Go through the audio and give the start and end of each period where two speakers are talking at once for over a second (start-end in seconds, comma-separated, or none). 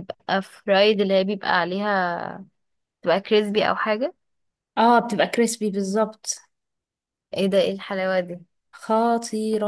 none